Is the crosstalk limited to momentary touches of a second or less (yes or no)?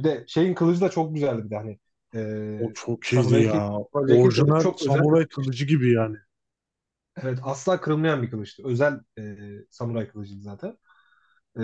no